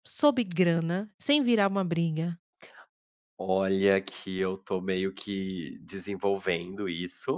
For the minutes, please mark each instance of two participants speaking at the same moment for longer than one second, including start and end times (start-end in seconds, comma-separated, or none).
none